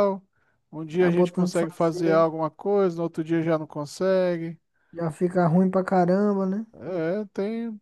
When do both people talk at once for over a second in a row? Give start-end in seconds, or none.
1.0-2.3